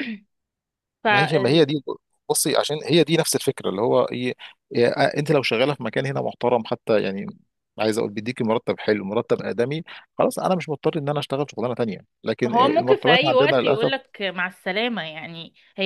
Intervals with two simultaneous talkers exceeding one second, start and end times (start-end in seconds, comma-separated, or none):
12.5-13.9